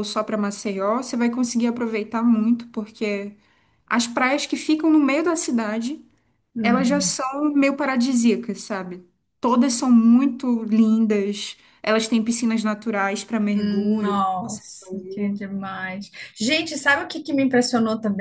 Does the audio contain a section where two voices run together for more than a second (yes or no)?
yes